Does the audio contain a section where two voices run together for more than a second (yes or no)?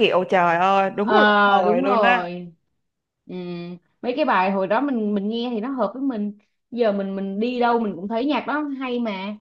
yes